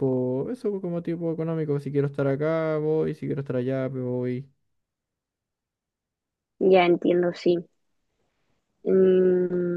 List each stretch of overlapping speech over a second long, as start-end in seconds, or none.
none